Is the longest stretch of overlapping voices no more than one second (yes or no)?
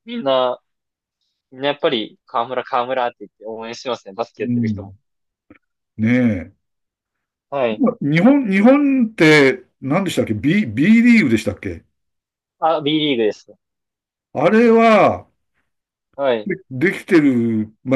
yes